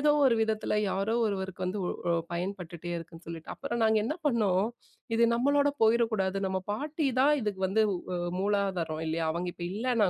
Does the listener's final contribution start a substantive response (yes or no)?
no